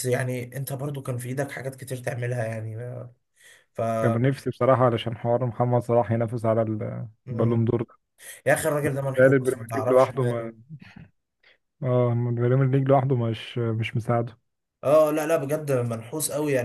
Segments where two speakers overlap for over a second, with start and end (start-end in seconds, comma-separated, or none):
9.2-10.5